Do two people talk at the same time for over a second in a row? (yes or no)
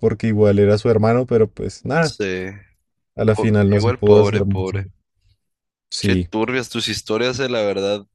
yes